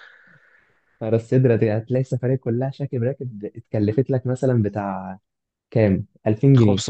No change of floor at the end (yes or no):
no